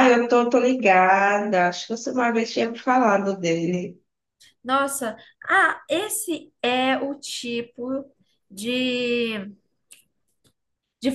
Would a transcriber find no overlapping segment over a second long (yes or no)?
yes